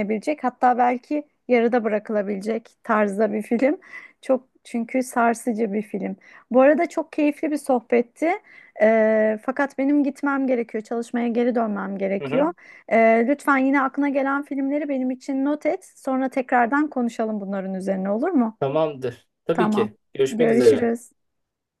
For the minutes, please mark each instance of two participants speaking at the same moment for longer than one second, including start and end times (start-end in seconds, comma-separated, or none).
19.5-20.9